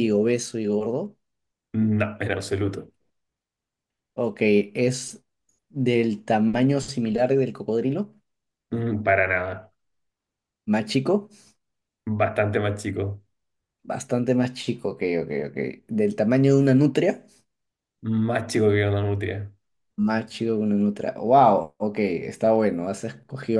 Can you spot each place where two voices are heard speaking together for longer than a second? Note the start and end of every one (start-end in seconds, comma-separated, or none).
none